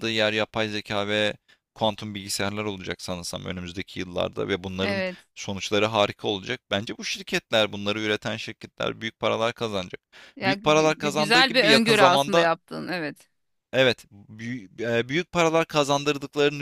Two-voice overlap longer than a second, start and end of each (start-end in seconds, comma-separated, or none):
10.4-12.5